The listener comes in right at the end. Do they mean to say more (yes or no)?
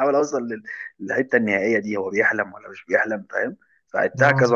no